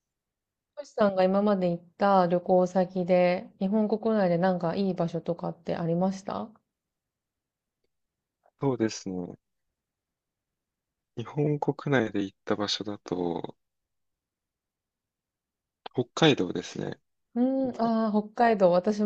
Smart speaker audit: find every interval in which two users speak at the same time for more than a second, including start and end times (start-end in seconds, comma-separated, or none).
none